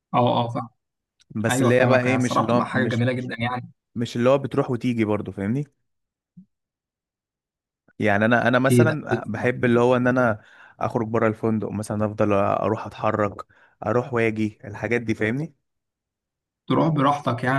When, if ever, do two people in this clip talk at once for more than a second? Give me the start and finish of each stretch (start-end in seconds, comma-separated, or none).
1.5-3.0